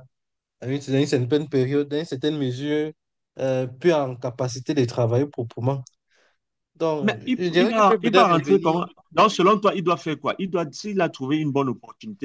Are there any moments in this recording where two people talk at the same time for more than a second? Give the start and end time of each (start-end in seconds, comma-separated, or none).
7.0-8.9